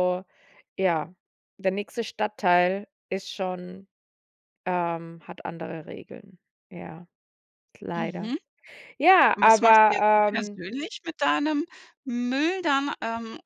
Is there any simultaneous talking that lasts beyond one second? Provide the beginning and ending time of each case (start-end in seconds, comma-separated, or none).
9.3-10.6